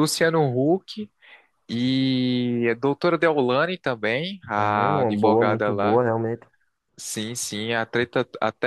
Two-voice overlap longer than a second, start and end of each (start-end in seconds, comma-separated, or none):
4.6-6.0